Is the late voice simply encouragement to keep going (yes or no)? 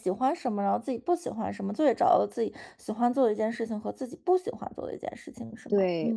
no